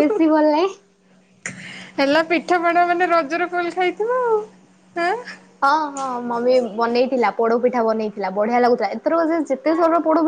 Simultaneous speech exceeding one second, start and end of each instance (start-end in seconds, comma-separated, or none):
none